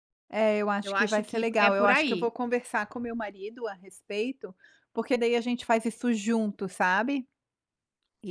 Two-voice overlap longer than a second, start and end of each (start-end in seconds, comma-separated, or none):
0.8-2.3